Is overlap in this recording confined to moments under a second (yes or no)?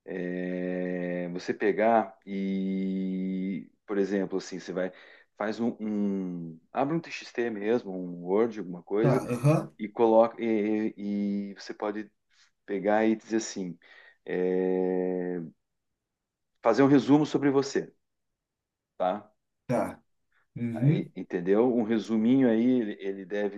yes